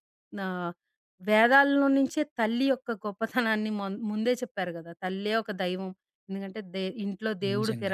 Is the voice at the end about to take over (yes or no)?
no